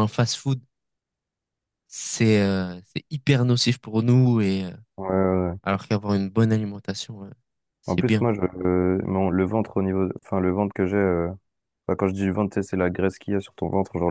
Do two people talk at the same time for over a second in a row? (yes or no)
no